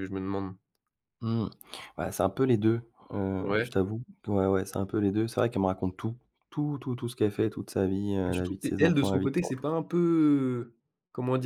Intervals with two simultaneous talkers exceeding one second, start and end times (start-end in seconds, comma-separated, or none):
8.3-9.5